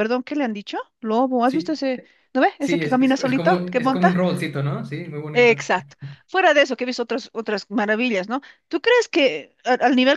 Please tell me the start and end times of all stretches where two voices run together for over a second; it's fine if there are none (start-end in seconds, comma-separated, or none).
2.6-4.2